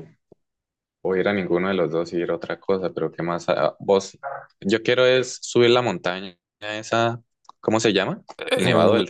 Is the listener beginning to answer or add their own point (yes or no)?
yes